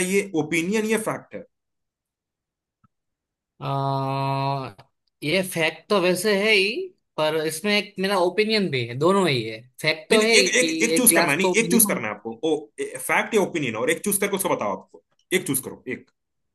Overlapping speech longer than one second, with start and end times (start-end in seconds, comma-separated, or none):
10.1-12.0